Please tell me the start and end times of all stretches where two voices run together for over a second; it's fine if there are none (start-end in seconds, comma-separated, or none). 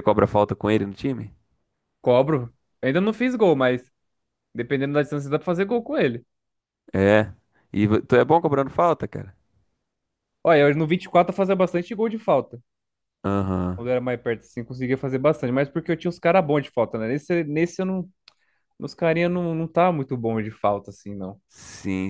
none